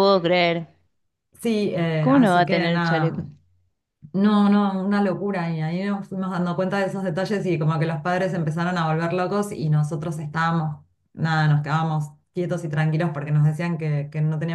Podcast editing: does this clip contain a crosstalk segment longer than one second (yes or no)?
yes